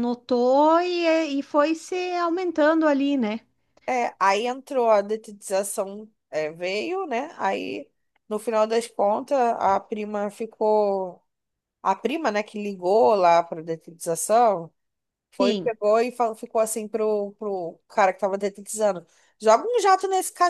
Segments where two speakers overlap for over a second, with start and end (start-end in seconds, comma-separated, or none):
none